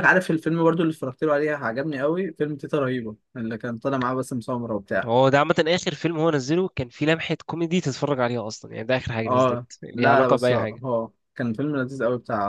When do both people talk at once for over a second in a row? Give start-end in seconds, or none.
9.2-10.8